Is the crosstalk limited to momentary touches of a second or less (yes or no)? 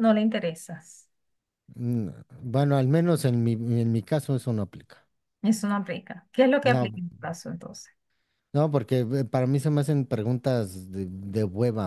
yes